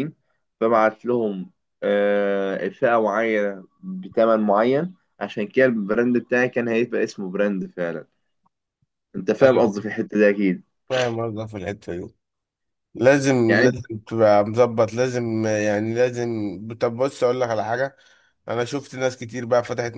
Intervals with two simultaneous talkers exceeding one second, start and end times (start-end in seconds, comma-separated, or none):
none